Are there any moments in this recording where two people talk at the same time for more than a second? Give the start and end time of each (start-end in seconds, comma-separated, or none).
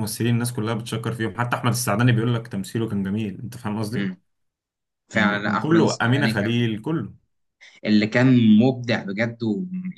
5.1-6.7